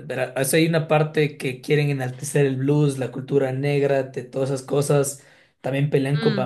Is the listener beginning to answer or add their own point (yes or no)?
no